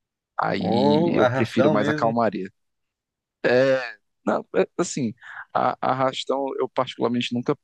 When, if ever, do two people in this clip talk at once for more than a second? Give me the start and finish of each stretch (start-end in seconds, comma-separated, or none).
0.6-2.2